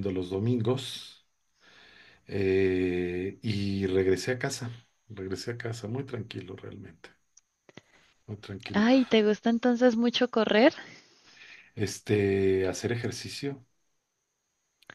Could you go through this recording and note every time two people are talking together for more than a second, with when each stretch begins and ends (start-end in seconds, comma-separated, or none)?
none